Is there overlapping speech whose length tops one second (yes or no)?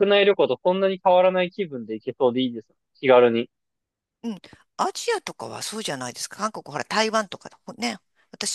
no